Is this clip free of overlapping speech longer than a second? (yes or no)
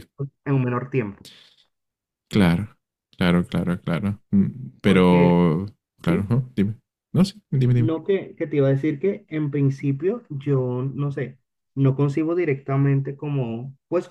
yes